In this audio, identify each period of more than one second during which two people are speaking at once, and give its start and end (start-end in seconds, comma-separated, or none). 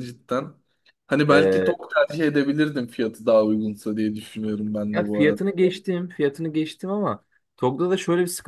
none